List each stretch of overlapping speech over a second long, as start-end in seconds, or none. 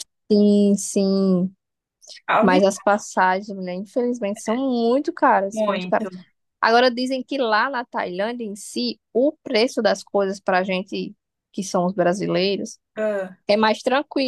none